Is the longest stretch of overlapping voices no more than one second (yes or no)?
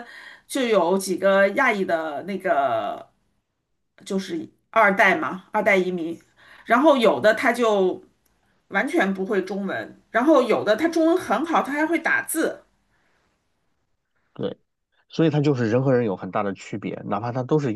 yes